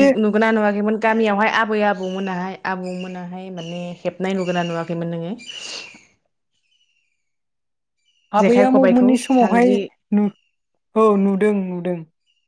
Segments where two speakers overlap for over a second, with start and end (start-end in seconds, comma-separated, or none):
8.4-9.8